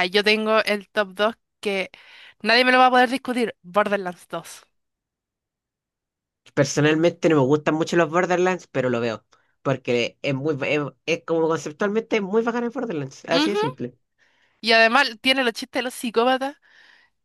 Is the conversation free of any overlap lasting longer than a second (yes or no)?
yes